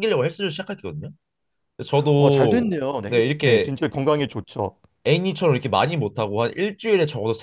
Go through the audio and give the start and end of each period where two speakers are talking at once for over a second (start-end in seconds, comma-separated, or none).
2.2-3.7